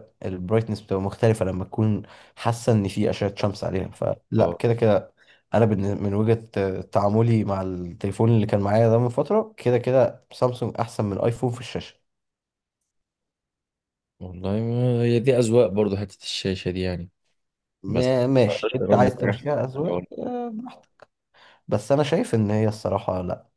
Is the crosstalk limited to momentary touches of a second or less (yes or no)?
no